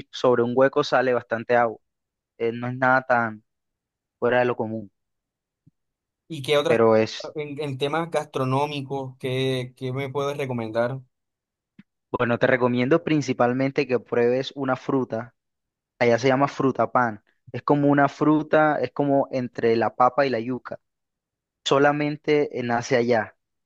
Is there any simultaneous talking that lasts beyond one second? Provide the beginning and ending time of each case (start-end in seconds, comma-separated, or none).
none